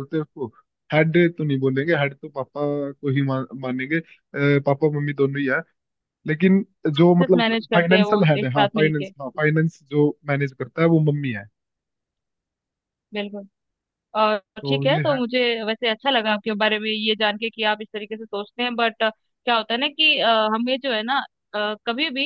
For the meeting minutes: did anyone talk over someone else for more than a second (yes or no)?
yes